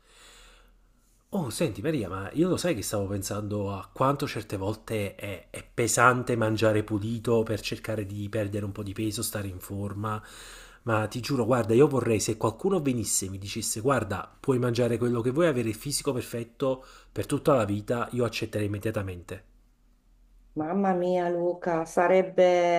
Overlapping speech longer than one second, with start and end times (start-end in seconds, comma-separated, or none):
none